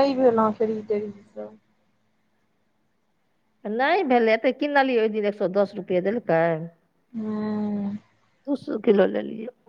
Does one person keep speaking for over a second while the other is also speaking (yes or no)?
no